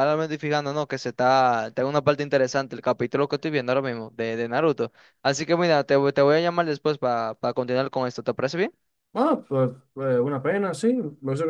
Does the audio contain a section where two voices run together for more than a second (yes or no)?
no